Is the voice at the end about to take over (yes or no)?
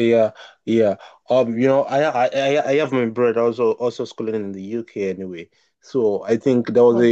no